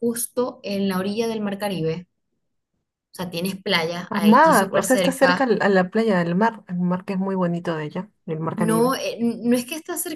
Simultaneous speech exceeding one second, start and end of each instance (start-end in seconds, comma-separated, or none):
4.1-5.5